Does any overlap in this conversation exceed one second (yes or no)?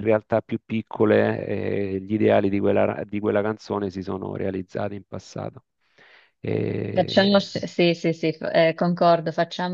no